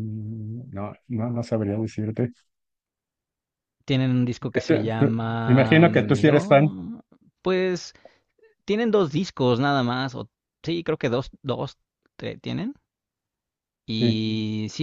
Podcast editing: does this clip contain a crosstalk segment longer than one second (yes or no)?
yes